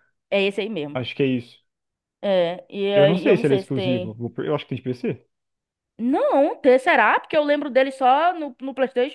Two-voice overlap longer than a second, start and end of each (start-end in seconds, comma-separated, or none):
2.9-4.2